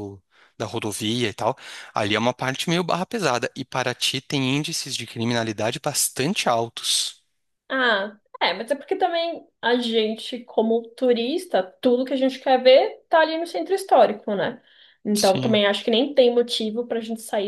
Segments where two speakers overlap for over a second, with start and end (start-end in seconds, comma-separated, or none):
none